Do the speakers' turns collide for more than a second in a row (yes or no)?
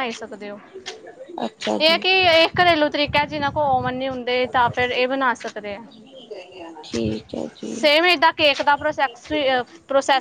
no